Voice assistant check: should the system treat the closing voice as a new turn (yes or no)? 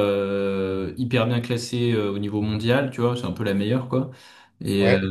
no